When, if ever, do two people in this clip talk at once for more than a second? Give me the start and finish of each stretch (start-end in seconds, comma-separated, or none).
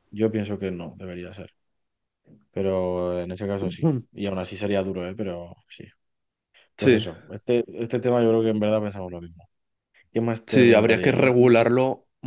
10.5-11.7